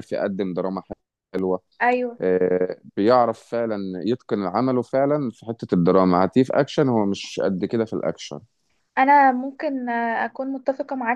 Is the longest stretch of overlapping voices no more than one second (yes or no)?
yes